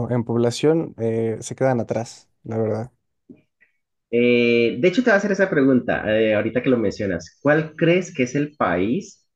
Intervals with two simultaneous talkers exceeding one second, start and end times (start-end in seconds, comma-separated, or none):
none